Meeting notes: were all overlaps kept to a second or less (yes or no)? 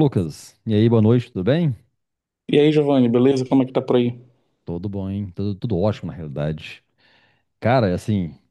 yes